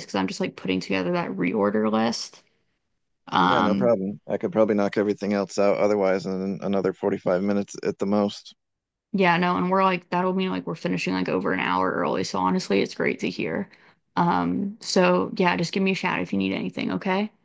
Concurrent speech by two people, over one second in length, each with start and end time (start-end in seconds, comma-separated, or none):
none